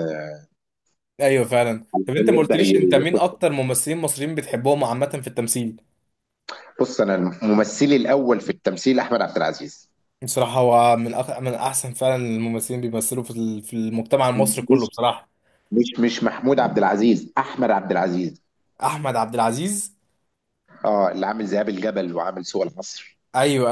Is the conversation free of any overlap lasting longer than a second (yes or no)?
no